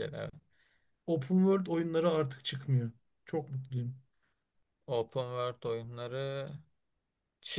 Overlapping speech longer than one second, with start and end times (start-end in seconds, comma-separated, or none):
none